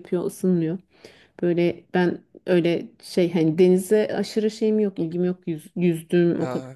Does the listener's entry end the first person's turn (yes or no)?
no